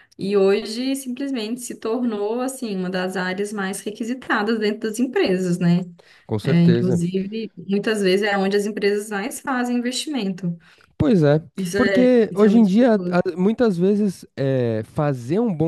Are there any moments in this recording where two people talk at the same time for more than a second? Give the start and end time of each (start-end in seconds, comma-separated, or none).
11.8-13.2